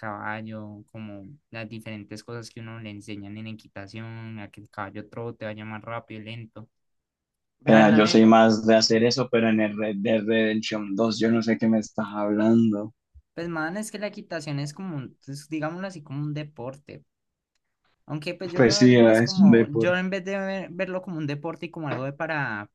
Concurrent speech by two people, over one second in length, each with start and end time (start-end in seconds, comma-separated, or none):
18.6-20.0